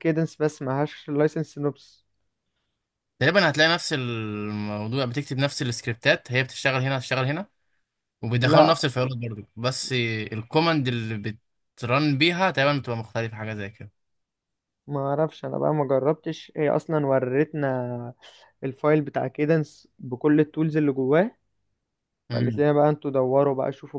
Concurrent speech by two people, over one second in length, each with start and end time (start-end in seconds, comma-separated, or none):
none